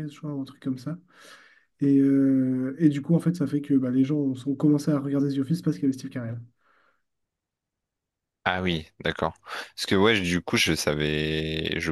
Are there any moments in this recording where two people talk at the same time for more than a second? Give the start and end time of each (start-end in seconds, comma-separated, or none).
none